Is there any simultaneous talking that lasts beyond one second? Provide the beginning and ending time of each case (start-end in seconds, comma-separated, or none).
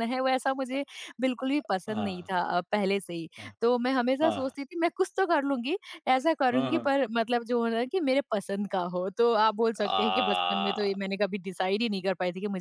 9.8-11.0